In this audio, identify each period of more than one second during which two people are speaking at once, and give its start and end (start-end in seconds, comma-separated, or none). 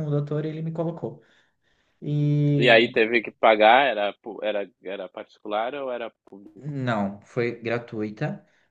none